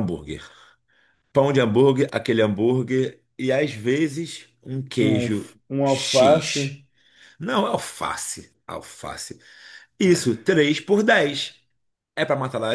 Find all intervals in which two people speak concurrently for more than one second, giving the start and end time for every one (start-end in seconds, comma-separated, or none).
5.0-6.8